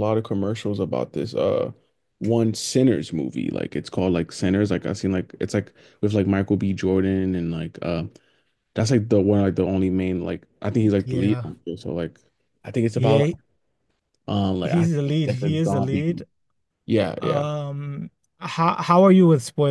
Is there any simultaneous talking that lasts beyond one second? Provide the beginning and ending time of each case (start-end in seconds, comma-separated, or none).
14.6-16.0